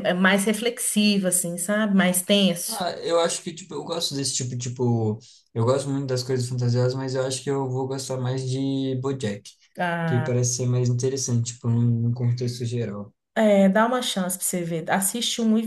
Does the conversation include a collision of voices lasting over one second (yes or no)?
no